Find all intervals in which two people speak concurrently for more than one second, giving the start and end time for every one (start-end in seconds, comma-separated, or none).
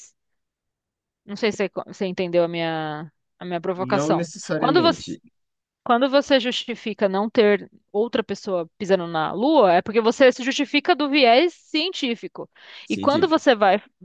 3.8-5.2